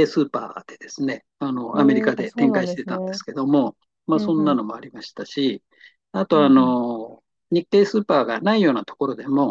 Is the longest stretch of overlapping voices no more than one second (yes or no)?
no